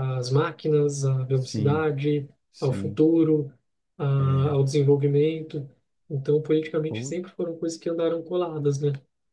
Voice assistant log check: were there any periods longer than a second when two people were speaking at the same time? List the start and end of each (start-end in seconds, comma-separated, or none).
none